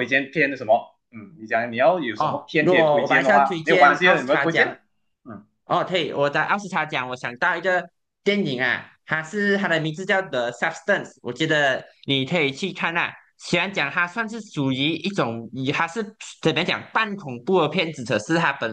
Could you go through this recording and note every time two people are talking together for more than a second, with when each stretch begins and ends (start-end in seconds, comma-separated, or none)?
2.2-4.8